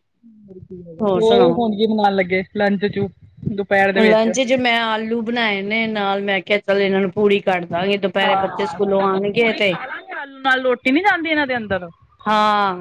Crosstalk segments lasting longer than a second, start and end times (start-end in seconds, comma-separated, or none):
8.2-9.7